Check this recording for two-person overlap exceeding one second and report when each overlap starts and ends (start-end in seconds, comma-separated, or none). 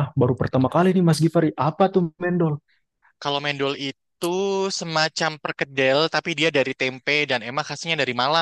none